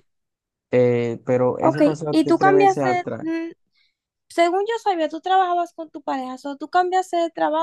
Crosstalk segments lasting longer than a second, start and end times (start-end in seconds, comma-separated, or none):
1.6-3.3